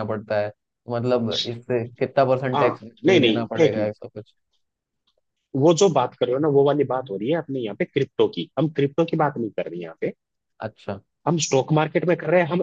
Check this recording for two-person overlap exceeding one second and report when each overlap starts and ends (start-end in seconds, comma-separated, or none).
2.5-3.9